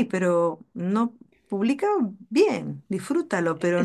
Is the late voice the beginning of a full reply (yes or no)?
no